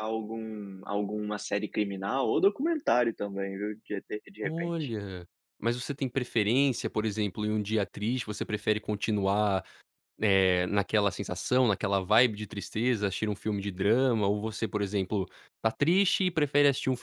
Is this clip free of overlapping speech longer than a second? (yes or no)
yes